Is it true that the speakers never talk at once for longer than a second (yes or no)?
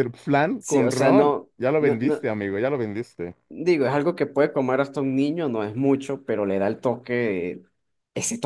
no